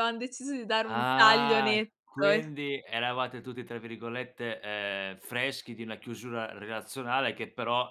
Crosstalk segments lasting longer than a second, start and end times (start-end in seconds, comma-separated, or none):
0.8-2.5